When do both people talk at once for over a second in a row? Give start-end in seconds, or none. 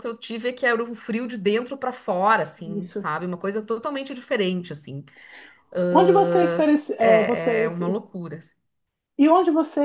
5.9-7.7